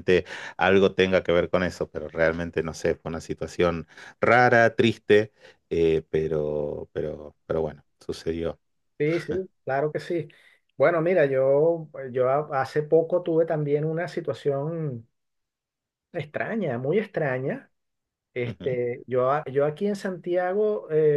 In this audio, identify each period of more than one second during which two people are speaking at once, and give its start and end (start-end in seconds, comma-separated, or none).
none